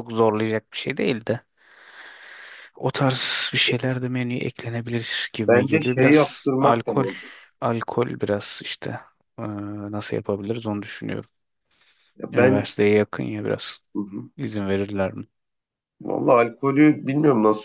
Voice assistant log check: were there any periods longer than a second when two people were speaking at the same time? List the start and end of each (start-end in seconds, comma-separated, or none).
5.4-7.0